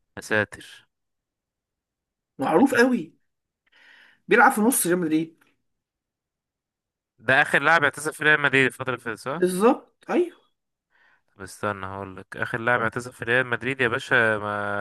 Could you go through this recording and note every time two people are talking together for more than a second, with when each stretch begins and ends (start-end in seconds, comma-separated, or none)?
none